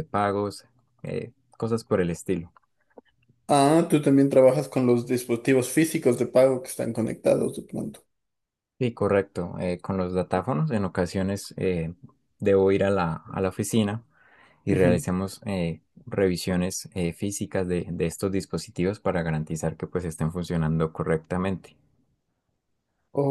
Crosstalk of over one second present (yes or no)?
no